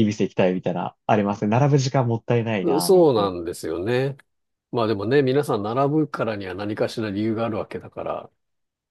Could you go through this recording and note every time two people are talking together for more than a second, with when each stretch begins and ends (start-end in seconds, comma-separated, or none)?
none